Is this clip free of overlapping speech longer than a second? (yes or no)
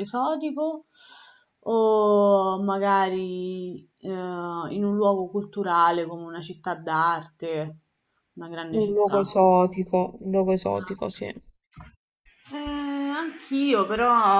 yes